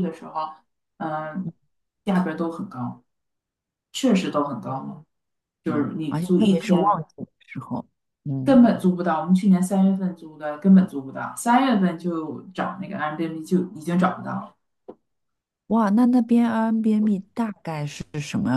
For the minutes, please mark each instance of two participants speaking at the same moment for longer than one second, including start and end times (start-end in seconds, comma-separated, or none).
5.7-7.0